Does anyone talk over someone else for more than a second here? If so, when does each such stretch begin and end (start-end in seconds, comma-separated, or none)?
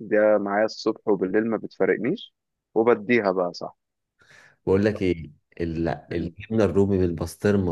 none